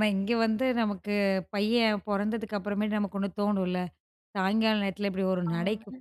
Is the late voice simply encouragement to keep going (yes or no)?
yes